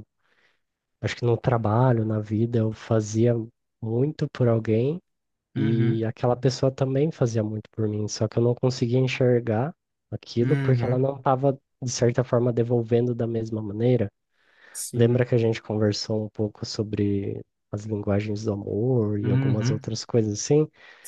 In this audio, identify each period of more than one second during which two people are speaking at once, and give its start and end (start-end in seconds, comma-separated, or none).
none